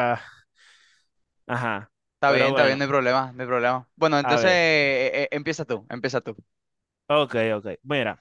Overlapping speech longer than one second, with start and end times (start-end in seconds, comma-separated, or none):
none